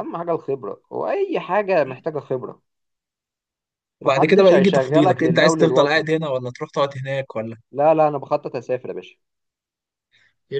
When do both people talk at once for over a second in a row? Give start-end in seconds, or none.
4.0-6.0